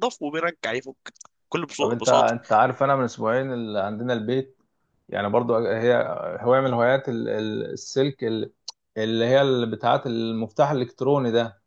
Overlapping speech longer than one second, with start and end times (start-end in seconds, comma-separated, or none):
none